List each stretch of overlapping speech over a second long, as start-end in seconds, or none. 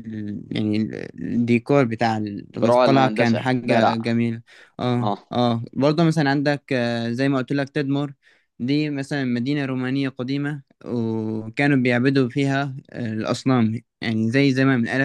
2.6-4.1